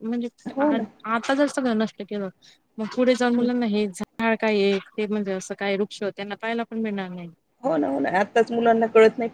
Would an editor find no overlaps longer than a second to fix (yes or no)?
yes